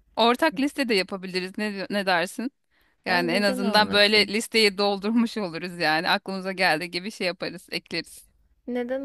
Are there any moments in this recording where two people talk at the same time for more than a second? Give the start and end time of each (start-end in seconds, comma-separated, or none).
3.1-4.3